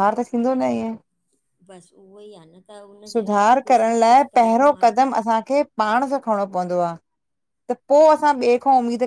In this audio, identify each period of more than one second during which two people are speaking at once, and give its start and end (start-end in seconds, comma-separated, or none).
3.1-5.1